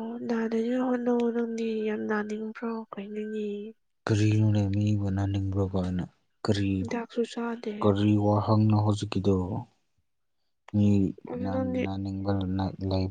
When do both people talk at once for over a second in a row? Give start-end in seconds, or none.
none